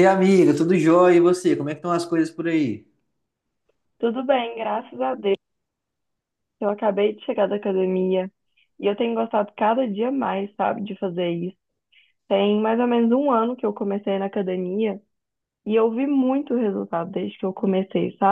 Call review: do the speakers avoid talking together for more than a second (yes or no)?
yes